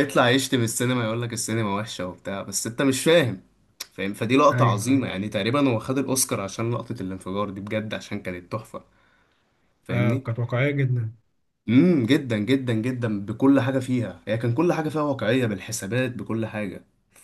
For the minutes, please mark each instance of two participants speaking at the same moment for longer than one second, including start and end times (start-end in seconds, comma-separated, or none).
none